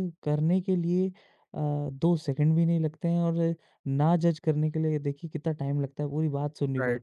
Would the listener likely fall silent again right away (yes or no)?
no